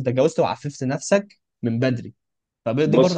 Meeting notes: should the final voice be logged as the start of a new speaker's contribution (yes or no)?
yes